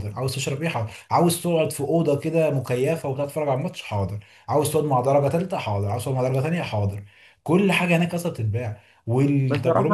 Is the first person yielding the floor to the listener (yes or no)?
yes